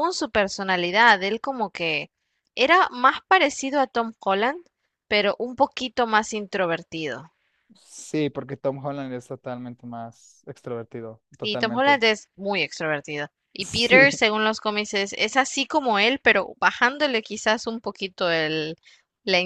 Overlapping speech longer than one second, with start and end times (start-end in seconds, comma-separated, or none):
none